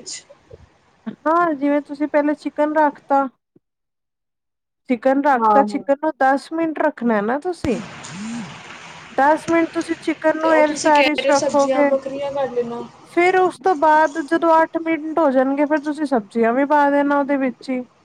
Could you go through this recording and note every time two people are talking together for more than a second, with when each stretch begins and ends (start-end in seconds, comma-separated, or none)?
10.4-11.9